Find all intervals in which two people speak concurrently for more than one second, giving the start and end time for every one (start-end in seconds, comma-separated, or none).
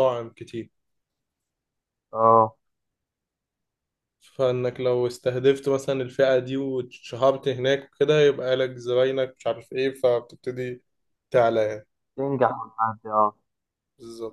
none